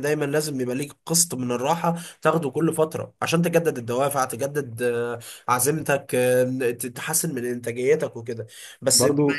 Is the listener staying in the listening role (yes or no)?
yes